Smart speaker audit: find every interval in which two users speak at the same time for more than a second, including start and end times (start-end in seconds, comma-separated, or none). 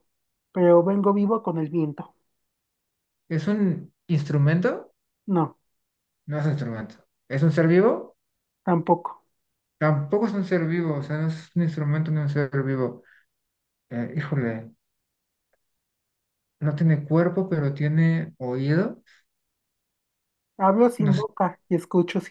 none